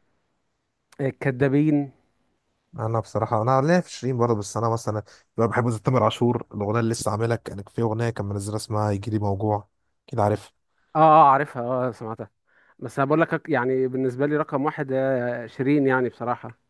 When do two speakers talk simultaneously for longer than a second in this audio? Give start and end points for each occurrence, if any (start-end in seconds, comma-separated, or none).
none